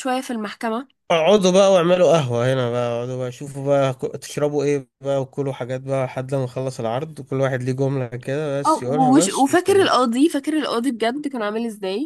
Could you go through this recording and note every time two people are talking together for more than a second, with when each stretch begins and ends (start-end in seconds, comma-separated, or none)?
8.7-9.9